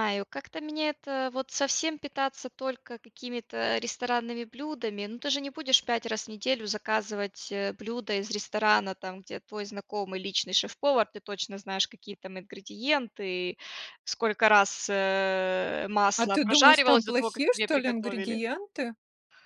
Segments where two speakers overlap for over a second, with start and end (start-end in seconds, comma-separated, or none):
16.2-18.4